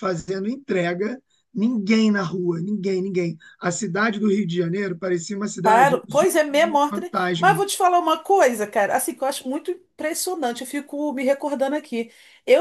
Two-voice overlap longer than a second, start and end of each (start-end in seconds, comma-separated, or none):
5.6-7.6